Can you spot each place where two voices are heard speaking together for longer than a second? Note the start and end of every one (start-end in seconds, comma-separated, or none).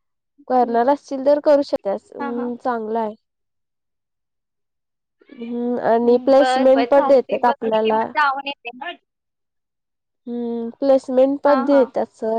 6.0-8.0